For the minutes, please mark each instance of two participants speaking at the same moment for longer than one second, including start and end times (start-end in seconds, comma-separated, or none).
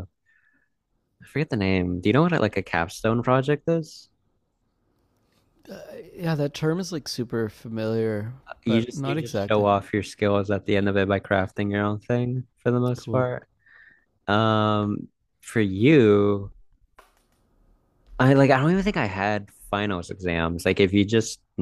8.5-9.7